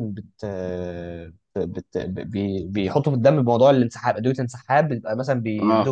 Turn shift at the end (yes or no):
no